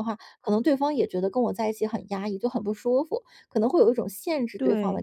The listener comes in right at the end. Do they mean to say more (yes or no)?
yes